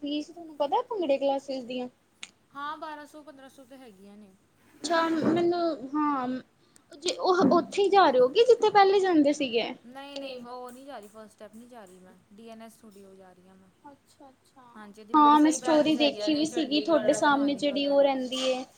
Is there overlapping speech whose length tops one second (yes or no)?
yes